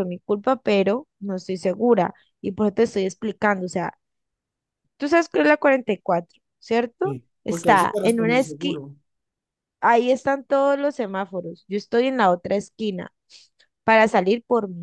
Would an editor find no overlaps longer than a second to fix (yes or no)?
no